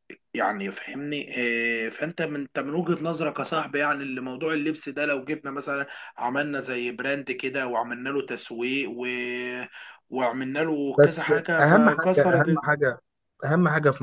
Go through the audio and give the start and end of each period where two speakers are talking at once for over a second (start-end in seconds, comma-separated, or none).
11.0-12.6